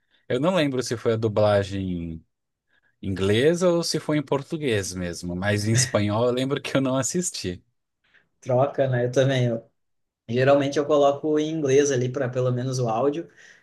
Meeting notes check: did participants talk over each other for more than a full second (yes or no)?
no